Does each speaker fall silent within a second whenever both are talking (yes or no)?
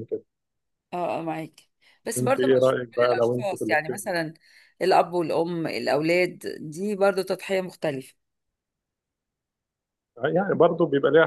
no